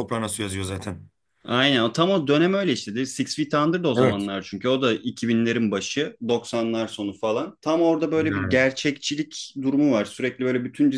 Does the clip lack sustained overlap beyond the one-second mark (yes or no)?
yes